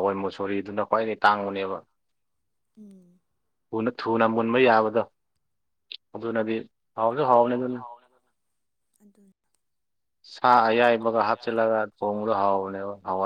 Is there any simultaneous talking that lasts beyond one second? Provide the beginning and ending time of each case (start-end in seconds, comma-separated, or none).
10.9-12.6